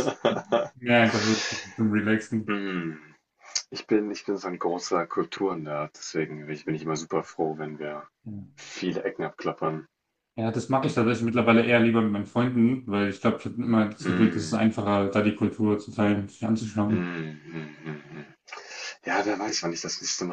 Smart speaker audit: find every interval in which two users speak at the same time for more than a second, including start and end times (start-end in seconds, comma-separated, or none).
none